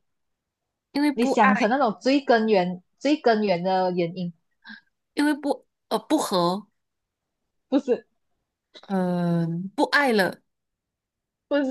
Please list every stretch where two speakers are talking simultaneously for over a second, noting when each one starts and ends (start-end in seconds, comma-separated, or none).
none